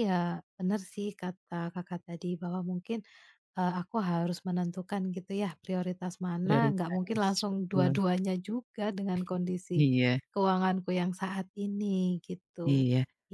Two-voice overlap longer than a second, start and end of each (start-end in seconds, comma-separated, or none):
6.4-8.0